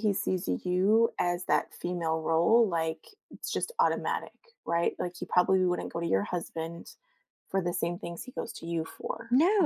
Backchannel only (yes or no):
no